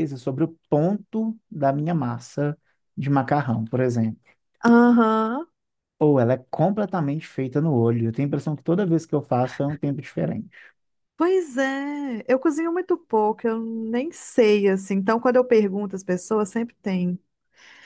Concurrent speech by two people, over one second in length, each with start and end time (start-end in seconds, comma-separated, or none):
none